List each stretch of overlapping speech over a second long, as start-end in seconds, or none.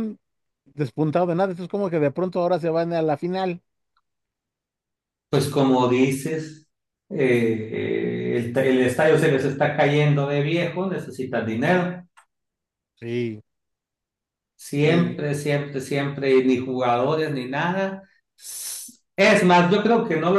none